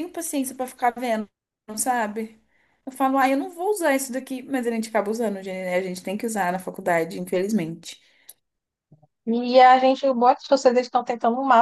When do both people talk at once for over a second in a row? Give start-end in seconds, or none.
none